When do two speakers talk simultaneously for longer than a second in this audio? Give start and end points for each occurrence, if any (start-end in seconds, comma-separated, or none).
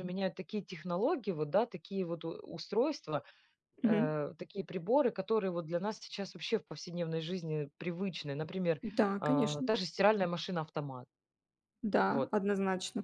none